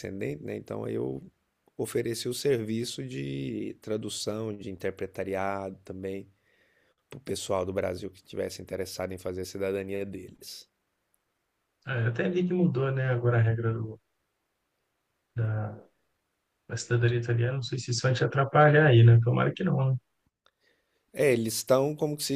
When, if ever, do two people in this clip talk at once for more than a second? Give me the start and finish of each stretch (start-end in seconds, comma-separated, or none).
none